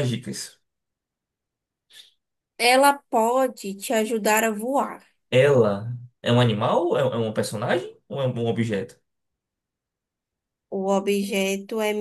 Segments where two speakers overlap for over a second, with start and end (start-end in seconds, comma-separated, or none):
none